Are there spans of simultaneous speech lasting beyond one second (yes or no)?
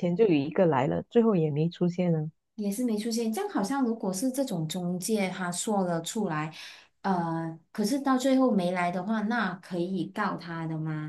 no